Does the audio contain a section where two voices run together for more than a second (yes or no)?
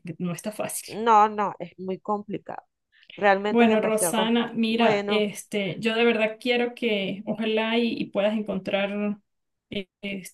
yes